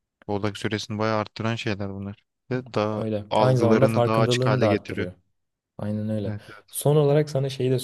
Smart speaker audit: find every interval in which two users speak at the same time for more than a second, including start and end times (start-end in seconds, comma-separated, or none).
3.0-5.1